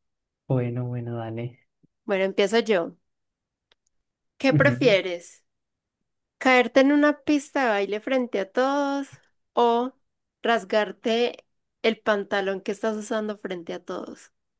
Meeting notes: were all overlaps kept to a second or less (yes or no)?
yes